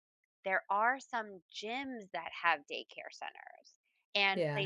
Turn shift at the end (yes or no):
no